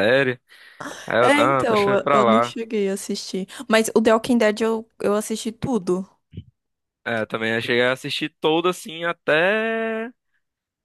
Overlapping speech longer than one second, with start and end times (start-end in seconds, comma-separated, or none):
1.2-2.6